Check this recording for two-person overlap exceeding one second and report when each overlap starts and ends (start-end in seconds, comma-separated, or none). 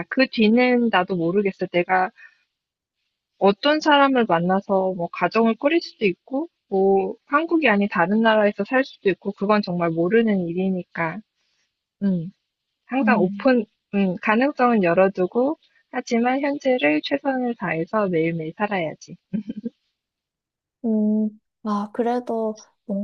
none